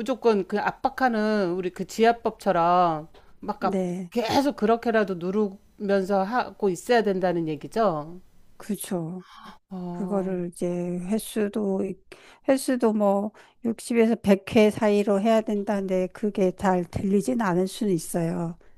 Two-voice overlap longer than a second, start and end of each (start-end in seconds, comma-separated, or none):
none